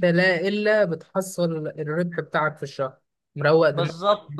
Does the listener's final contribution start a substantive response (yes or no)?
yes